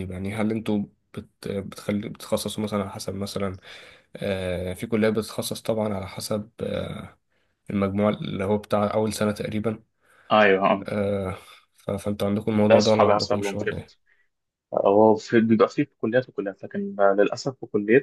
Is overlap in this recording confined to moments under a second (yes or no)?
no